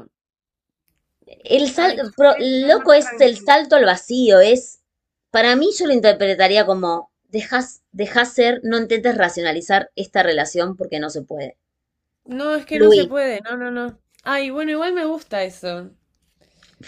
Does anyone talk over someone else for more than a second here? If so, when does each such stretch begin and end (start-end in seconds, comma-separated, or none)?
1.8-3.5